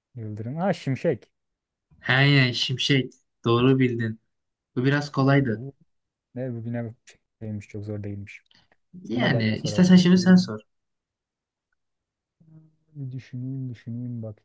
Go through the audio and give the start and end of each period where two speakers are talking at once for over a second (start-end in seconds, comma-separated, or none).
9.1-10.6